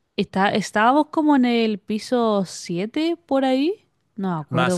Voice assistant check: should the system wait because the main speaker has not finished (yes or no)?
no